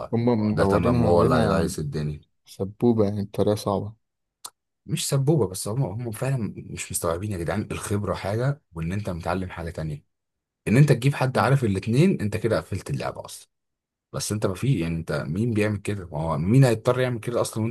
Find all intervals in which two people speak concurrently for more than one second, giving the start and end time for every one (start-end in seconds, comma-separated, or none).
0.5-1.7